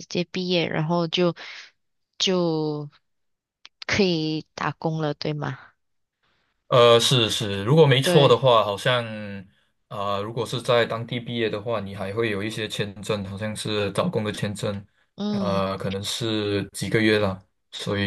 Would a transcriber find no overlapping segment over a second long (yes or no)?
yes